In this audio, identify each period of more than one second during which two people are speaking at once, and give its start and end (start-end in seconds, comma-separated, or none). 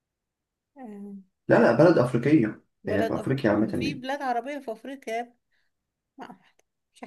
2.8-4.0